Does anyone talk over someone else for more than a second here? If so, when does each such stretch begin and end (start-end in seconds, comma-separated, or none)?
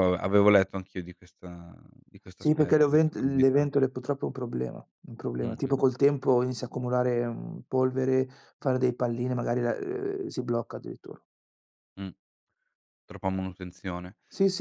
2.4-3.6